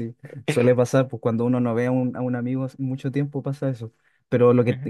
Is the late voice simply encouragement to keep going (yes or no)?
yes